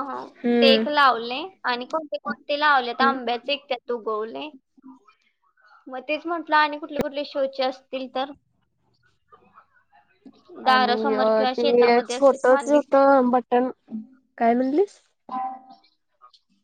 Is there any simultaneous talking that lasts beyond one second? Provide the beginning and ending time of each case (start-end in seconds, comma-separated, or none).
10.7-12.9